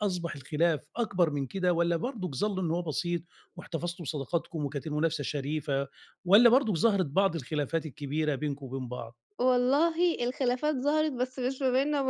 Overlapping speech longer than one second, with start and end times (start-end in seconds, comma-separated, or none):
none